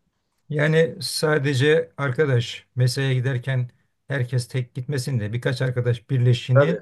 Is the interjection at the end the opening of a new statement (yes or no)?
no